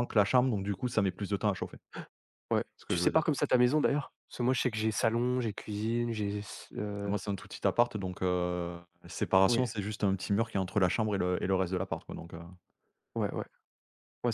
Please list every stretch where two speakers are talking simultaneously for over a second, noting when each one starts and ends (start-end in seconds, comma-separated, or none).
none